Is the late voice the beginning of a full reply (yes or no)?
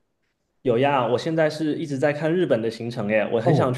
yes